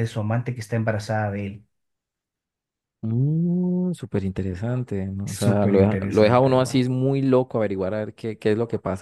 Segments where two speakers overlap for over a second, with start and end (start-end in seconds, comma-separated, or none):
5.2-6.8